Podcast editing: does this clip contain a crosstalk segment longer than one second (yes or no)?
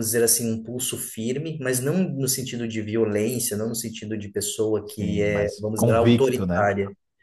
yes